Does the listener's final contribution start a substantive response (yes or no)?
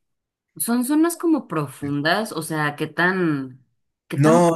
yes